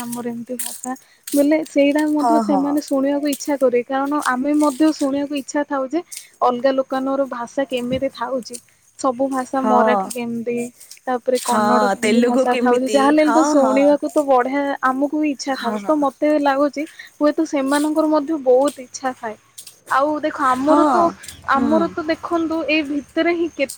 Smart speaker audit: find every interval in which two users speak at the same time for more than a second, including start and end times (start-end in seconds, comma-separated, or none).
11.5-13.8